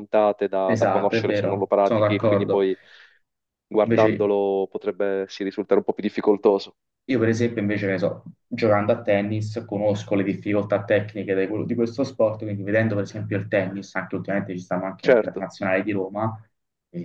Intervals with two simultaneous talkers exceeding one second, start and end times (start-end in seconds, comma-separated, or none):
0.6-2.6